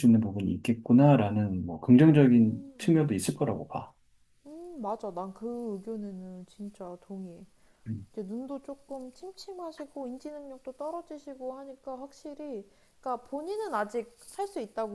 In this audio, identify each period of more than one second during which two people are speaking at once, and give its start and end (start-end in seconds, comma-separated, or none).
1.9-3.2